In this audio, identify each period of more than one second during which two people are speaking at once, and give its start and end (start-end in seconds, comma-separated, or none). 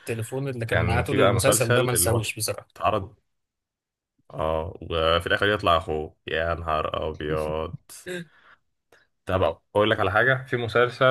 0.7-2.2